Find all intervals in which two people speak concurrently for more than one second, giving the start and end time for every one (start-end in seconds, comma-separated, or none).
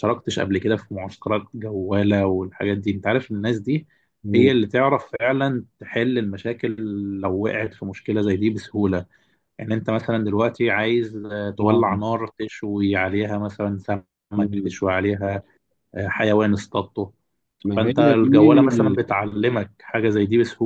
17.8-19.0